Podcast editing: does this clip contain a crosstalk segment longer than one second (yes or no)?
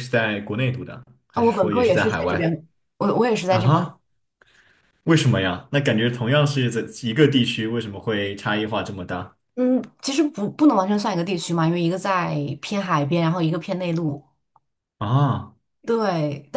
yes